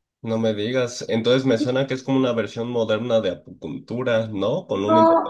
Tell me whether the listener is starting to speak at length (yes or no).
yes